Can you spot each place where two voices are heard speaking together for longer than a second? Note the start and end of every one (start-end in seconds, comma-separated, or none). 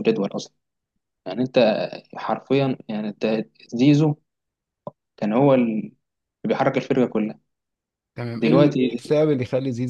none